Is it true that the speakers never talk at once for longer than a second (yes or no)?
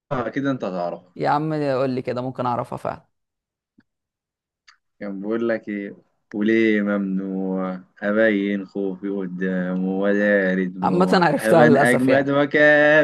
no